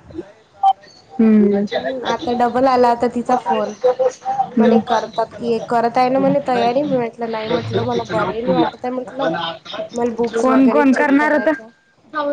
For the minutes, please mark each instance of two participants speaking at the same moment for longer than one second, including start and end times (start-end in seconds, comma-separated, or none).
10.3-11.5